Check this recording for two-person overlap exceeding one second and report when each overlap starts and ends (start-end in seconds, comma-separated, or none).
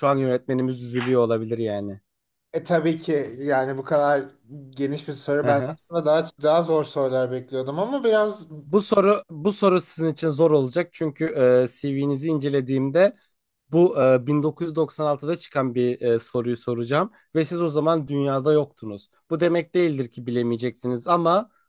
none